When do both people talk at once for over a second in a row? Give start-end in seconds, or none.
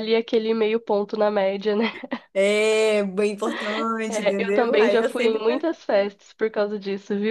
4.1-5.6